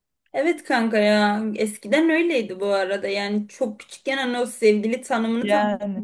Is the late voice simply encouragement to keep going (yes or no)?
yes